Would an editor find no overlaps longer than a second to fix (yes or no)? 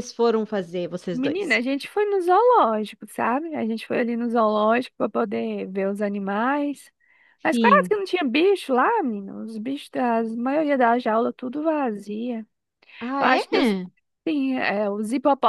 yes